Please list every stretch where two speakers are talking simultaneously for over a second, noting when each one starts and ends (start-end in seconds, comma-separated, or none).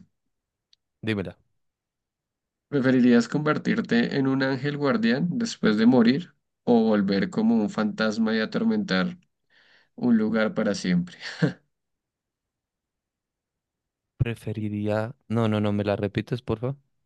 none